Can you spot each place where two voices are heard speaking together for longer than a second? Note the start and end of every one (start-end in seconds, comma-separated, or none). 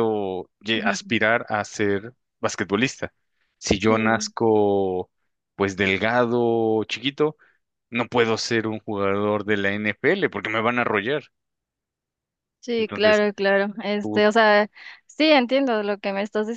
none